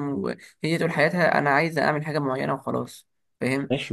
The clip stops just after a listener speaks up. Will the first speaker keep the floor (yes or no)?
no